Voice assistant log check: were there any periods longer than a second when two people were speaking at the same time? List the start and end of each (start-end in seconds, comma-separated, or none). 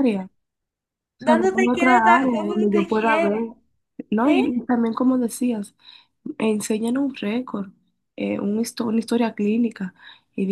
1.2-3.4